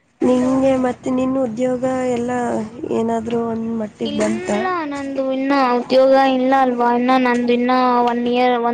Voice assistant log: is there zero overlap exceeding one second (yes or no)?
yes